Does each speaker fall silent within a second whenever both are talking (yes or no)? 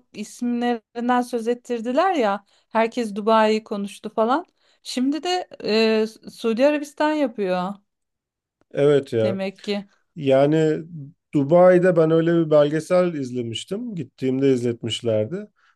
yes